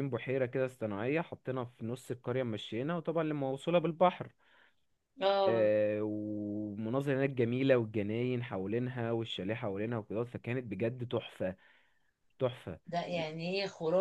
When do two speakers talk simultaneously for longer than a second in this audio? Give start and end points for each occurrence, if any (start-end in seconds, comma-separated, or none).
none